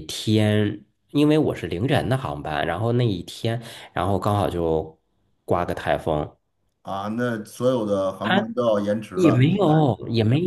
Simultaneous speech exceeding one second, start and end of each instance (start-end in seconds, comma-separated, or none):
none